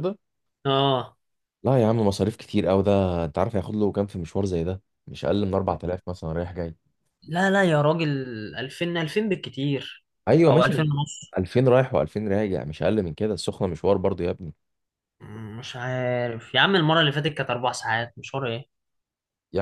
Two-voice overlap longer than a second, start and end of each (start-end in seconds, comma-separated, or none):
none